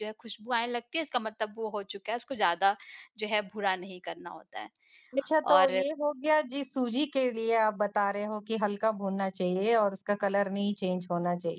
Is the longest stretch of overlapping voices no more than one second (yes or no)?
yes